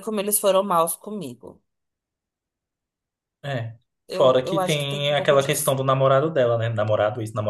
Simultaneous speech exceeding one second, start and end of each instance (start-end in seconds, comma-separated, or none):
4.1-5.8